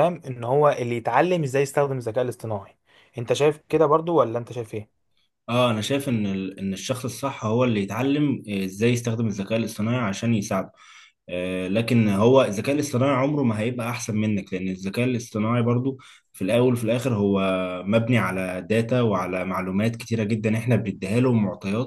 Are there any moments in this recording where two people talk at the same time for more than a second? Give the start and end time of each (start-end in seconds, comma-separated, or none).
none